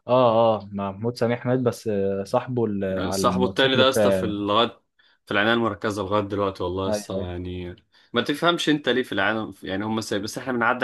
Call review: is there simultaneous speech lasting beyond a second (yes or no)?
yes